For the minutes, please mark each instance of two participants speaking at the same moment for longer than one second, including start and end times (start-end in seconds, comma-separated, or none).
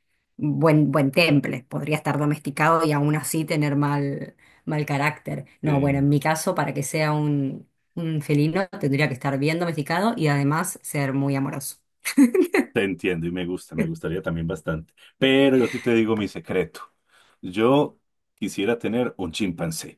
none